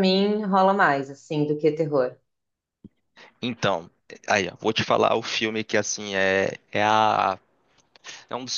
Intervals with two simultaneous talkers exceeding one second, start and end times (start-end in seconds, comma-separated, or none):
none